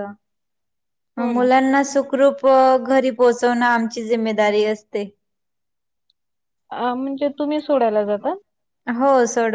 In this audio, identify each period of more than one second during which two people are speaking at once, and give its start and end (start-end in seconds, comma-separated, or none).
none